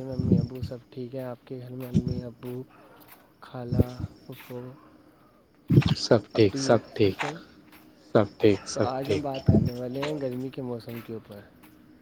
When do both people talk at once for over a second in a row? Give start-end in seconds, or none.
none